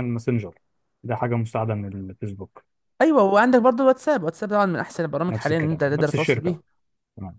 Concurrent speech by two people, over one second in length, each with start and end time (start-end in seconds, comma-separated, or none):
5.3-6.6